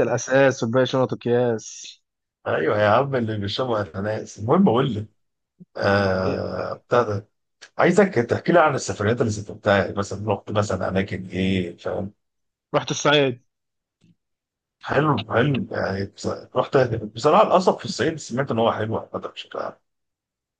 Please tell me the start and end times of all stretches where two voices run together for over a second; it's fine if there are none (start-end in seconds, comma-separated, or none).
none